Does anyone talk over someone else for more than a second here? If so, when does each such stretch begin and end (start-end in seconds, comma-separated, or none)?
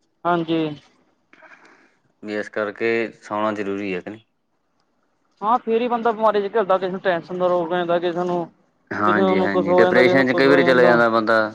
9.1-10.6